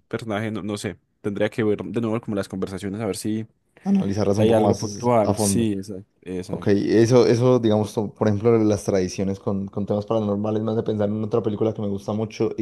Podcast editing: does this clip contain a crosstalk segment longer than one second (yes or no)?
yes